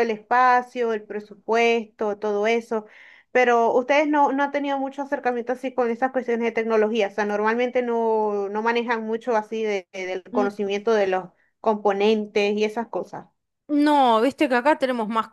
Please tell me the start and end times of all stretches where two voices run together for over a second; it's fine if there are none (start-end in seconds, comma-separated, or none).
none